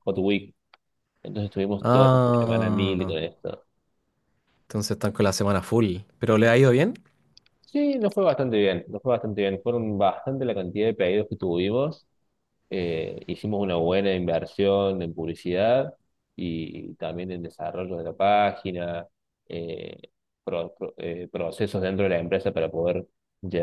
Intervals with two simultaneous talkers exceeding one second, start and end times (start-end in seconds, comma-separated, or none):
1.8-3.1